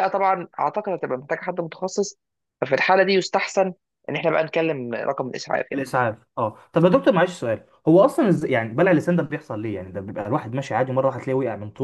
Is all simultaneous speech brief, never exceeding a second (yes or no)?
yes